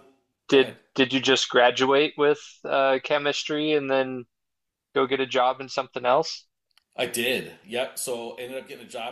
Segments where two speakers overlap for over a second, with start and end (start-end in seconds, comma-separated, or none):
none